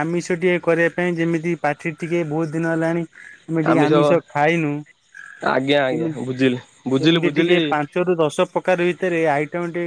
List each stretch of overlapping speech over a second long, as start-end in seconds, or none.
none